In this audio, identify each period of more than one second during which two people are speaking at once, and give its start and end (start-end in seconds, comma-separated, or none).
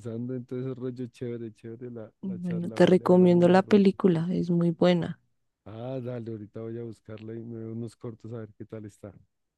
2.2-3.9